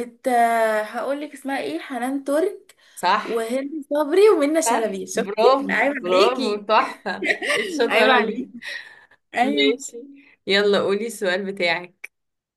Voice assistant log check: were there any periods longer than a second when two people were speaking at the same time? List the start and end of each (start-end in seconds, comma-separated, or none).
4.7-6.6